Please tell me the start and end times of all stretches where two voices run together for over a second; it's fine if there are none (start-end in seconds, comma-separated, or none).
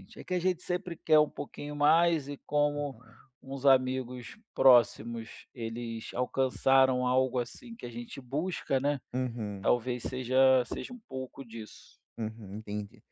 none